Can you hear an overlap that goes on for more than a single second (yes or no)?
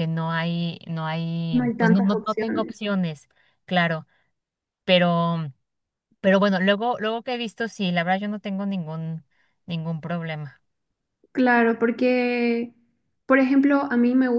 yes